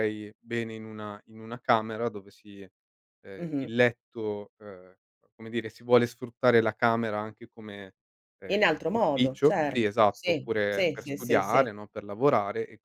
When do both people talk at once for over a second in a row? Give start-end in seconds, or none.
8.5-11.7